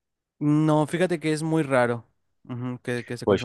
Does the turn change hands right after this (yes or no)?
yes